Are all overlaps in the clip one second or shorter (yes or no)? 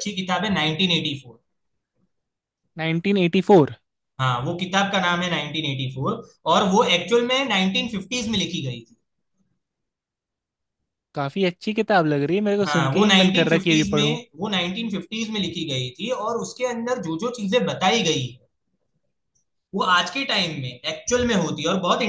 no